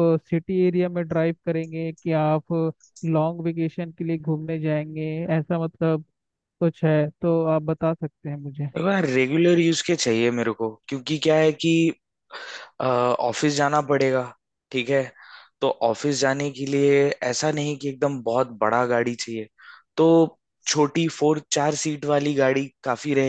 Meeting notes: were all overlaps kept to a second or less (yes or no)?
yes